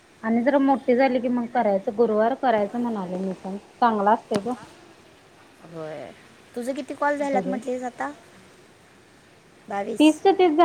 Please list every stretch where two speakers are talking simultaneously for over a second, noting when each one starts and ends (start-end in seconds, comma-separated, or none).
none